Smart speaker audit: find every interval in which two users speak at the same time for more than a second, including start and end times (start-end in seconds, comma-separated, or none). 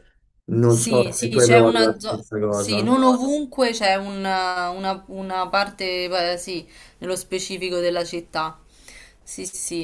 0.6-3.0